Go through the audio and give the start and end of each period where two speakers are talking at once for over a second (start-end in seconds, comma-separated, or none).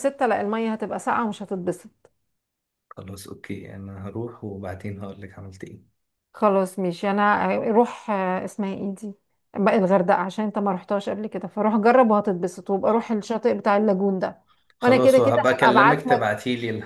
14.8-16.3